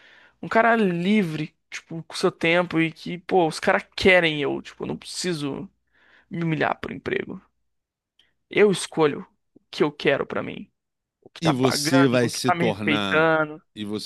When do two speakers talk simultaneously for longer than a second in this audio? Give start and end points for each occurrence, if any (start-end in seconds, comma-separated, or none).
11.4-13.3